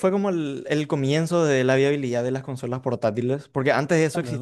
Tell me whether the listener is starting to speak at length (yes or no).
no